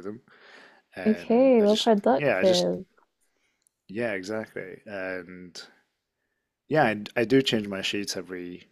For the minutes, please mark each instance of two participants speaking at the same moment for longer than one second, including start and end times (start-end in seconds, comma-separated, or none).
1.1-2.7